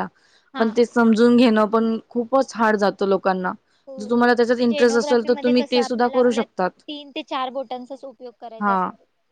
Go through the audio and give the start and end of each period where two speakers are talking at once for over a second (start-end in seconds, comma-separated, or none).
4.0-6.4